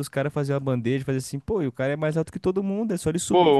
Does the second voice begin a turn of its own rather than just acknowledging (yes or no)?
yes